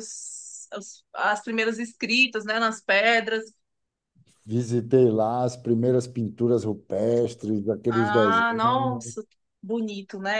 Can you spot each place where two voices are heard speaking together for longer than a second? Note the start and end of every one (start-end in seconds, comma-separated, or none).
7.9-9.1